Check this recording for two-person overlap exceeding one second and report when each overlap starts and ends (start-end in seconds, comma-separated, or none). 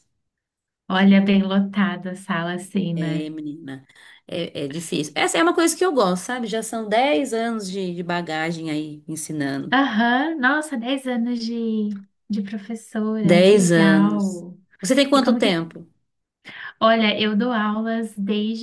13.2-14.4